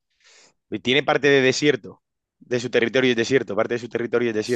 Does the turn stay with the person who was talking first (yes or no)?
no